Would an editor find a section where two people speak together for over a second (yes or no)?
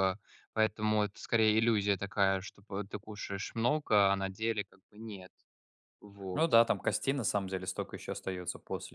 no